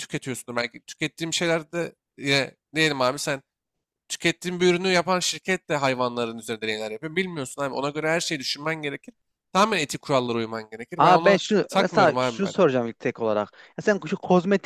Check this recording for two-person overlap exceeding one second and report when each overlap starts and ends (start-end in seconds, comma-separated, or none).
11.0-12.6